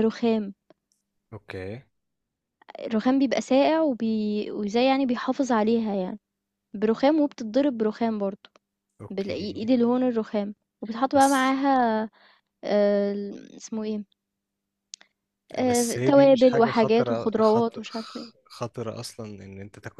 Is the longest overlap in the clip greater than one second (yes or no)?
yes